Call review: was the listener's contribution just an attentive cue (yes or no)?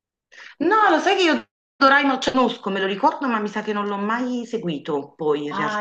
no